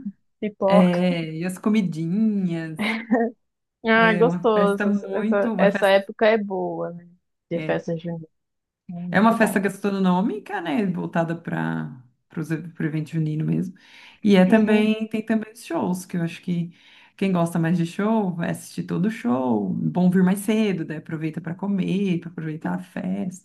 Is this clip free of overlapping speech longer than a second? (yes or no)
no